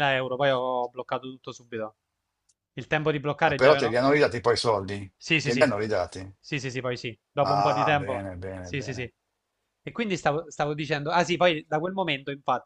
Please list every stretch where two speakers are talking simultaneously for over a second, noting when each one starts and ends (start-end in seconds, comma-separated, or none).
7.4-9.1